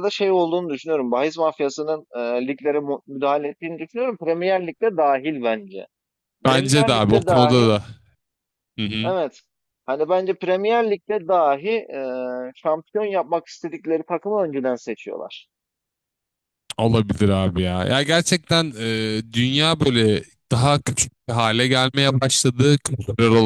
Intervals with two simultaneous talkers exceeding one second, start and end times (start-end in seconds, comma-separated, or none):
6.5-7.7